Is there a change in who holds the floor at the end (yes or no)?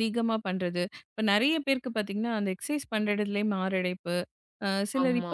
no